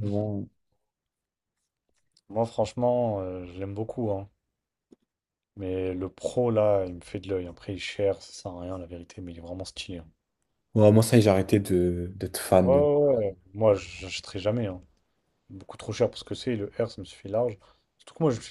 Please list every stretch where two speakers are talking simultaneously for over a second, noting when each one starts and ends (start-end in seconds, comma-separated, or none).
none